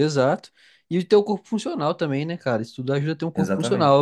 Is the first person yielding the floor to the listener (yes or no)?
no